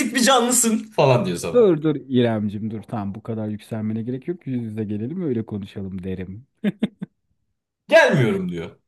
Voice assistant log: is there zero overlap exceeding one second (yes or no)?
yes